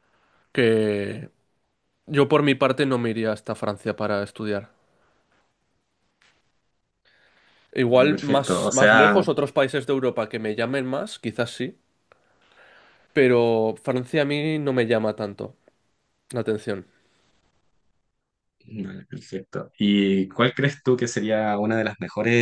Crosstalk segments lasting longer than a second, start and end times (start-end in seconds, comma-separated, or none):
7.8-9.2